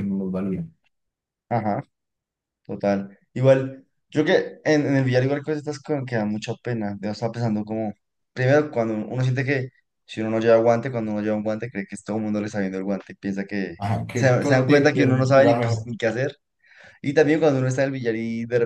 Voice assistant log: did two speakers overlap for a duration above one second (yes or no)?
yes